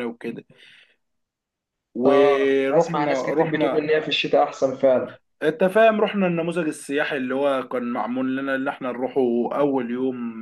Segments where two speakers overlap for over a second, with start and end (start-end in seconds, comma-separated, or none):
2.1-3.9